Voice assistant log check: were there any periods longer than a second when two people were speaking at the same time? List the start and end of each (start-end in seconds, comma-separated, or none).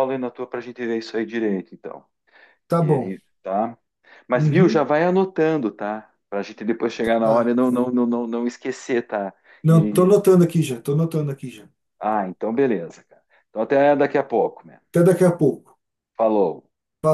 none